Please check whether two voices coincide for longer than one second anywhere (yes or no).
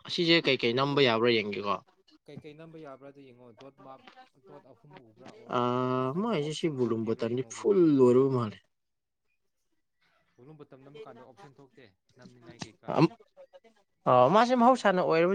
yes